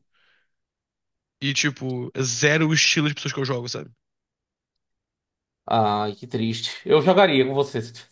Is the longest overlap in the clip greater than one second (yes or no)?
no